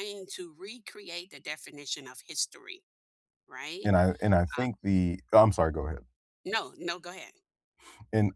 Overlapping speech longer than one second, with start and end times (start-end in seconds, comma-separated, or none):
none